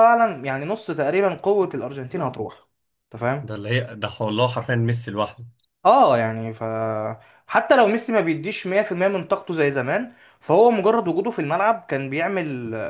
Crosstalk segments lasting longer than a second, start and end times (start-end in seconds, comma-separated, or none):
none